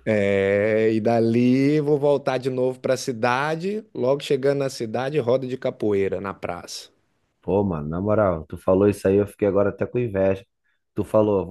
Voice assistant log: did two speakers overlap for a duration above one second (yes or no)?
no